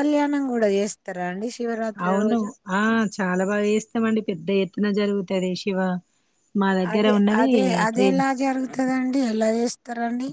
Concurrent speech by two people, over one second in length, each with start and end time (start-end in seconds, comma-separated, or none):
none